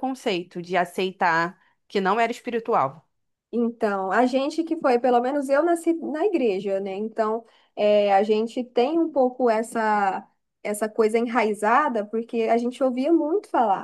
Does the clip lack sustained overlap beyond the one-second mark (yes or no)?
yes